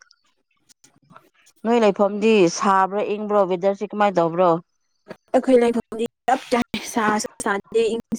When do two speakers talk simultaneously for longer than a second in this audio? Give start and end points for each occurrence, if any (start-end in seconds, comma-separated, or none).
none